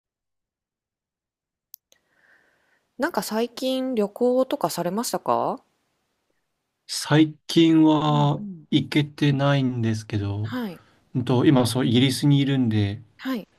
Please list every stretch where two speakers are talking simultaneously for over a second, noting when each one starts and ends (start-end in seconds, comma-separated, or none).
none